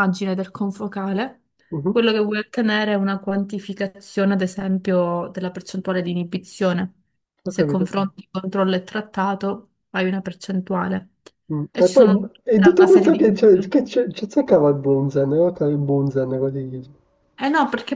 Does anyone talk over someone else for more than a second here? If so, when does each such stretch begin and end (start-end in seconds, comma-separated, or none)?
11.7-13.2